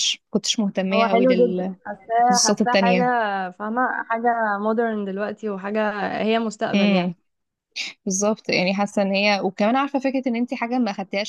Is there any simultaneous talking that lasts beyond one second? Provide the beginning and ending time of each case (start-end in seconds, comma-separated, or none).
0.9-3.0